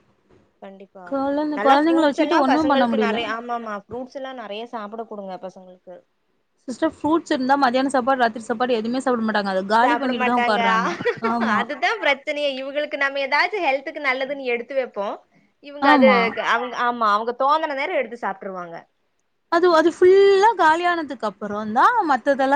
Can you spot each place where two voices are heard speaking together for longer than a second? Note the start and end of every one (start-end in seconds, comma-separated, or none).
1.6-3.2